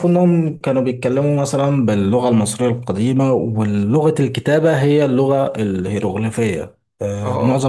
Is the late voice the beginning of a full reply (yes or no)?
no